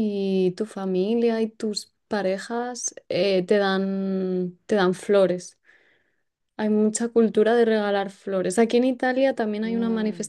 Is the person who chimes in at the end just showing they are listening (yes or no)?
yes